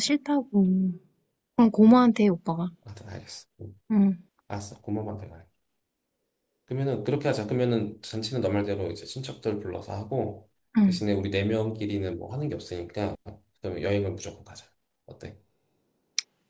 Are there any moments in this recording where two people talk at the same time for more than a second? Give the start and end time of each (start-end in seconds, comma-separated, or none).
none